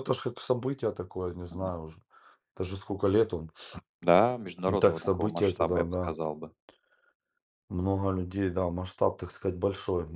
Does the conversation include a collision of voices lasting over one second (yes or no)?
yes